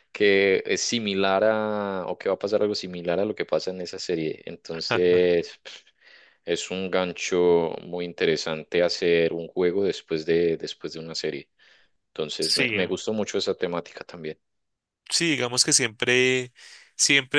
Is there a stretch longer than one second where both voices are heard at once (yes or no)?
no